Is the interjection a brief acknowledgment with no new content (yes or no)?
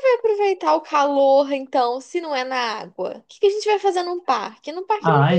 no